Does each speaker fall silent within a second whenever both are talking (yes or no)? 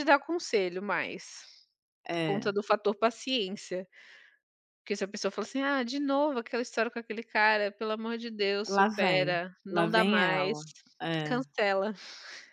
no